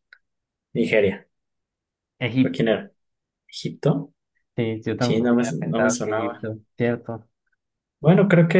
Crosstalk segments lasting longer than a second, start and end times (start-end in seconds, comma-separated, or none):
5.0-6.5